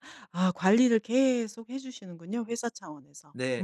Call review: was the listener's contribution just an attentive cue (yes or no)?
no